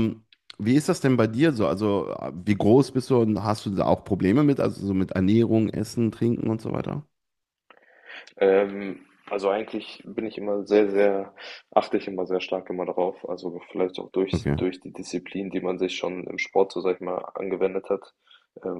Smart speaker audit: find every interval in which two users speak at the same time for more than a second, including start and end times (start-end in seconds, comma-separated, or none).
none